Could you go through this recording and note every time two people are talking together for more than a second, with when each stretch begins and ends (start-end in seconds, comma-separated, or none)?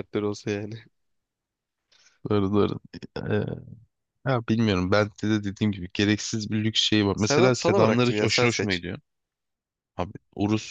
7.2-8.8